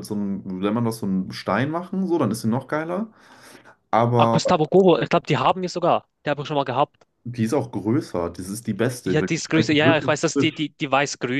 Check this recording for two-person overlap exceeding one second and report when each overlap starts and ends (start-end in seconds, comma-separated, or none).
9.1-10.6